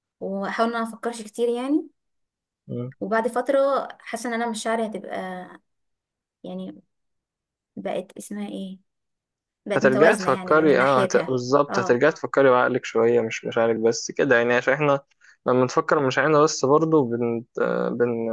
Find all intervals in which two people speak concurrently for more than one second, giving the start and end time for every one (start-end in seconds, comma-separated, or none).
9.8-12.0